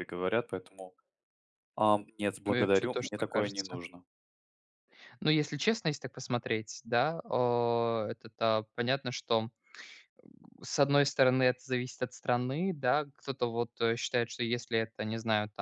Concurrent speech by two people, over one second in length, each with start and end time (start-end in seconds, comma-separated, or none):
2.5-3.8